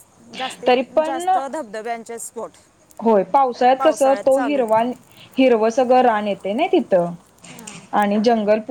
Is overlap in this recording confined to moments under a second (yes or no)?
yes